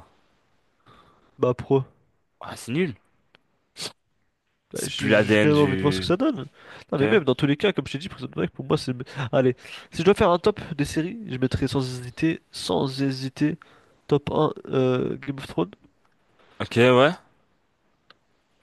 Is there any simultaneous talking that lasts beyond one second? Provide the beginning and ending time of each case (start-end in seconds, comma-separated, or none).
4.7-6.2